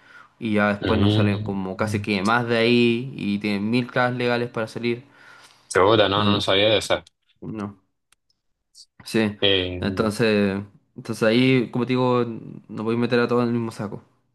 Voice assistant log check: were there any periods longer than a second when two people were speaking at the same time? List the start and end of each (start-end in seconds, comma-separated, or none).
0.8-2.0